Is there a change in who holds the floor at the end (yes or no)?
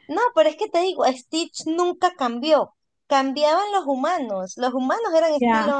yes